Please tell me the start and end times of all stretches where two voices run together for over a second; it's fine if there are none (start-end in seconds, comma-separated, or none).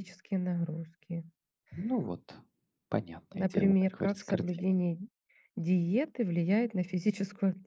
3.3-4.7